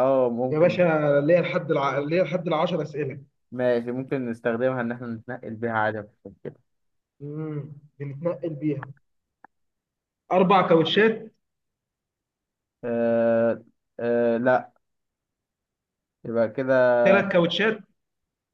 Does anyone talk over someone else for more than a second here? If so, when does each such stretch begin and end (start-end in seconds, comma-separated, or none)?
none